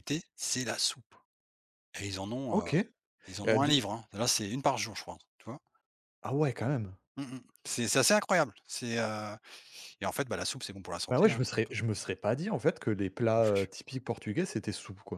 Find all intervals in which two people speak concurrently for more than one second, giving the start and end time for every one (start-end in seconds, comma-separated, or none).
none